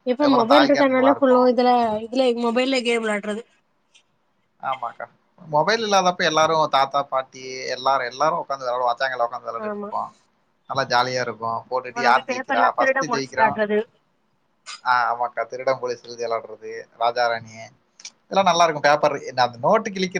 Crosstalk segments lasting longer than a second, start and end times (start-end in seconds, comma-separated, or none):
11.9-13.5